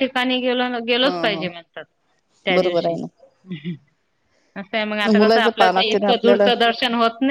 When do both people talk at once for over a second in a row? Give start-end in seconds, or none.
4.8-6.5